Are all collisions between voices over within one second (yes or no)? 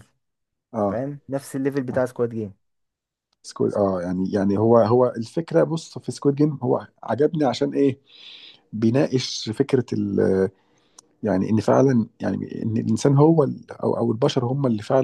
yes